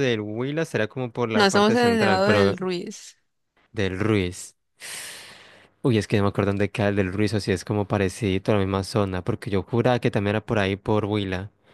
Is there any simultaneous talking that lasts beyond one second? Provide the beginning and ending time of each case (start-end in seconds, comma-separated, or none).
1.3-2.6